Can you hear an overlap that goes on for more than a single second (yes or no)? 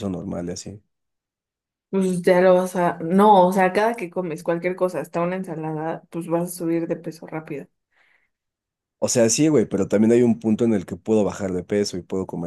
no